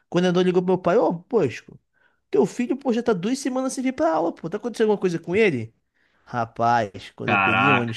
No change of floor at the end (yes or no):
yes